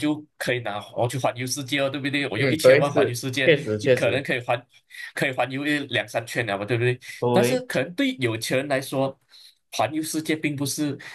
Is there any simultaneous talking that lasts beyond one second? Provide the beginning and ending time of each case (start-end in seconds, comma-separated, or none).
2.4-4.3